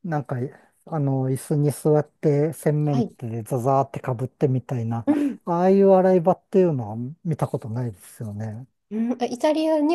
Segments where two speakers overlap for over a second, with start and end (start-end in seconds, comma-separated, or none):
none